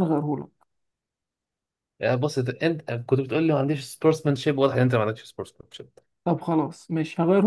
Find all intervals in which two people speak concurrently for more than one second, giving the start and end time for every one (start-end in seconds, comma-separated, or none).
none